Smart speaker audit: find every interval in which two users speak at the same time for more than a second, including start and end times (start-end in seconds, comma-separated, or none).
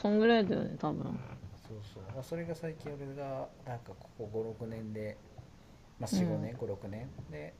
none